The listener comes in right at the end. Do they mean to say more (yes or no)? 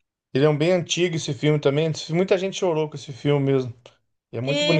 yes